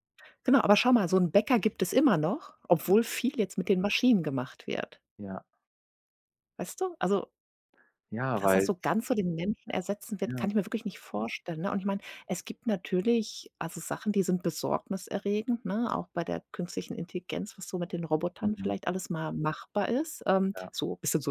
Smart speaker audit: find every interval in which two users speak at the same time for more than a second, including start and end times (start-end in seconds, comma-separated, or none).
none